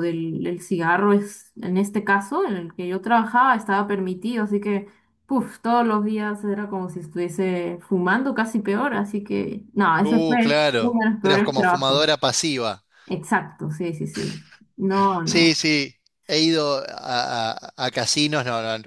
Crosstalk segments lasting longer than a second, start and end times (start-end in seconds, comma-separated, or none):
10.0-12.1